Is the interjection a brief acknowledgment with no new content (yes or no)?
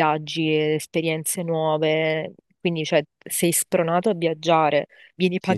no